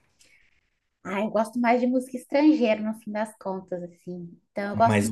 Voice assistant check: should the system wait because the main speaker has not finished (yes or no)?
yes